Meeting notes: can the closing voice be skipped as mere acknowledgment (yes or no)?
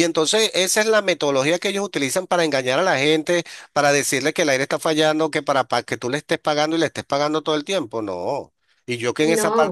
yes